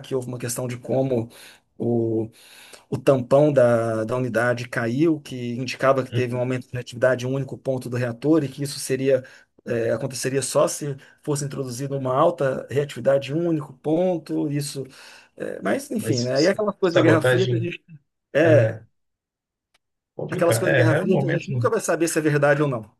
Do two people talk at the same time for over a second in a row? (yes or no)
yes